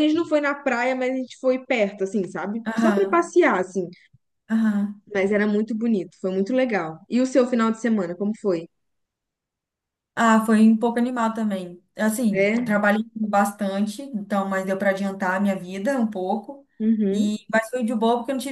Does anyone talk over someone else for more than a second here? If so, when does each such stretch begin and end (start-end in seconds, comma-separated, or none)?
none